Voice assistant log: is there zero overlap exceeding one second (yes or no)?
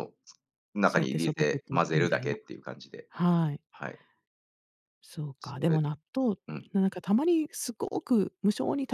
no